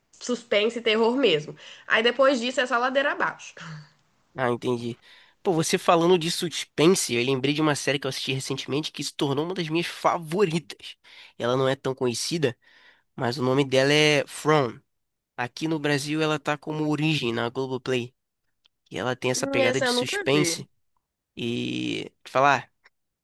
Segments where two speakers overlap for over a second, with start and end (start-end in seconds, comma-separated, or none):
19.3-20.6